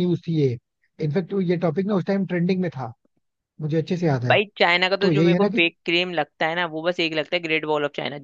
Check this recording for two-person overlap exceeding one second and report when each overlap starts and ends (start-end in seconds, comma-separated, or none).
none